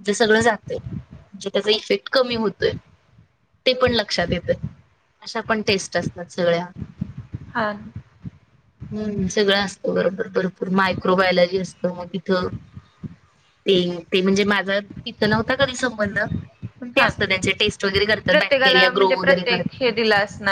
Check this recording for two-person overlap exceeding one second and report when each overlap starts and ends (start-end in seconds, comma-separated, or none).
18.3-19.9